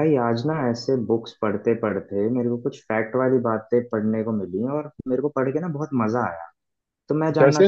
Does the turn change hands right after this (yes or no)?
no